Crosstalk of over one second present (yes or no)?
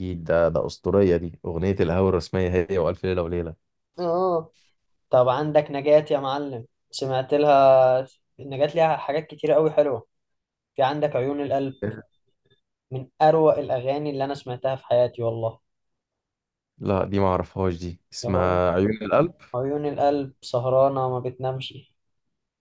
no